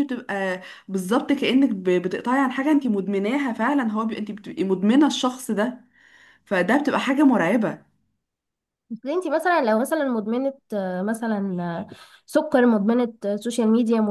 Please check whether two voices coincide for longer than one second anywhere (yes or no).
no